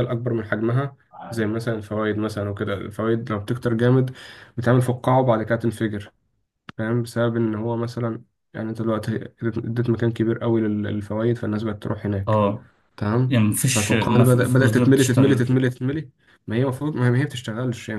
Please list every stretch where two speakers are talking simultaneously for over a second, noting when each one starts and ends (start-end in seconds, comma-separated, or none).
13.3-15.5